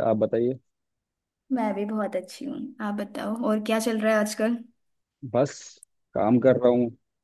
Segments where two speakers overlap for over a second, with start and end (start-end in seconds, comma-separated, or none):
none